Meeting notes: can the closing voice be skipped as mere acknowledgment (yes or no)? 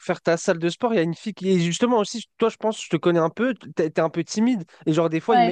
yes